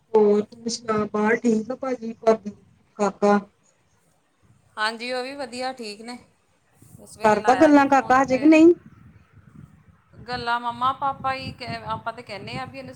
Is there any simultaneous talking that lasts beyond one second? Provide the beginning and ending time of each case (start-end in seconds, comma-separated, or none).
7.2-8.6